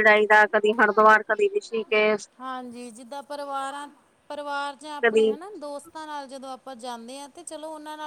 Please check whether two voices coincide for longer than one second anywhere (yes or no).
no